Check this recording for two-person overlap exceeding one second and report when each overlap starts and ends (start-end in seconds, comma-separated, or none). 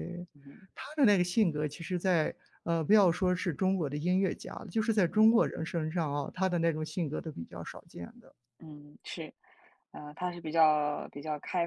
none